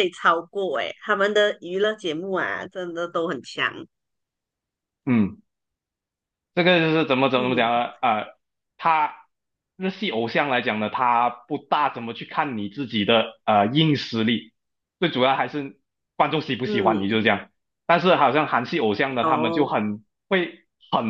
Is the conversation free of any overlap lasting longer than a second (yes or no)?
yes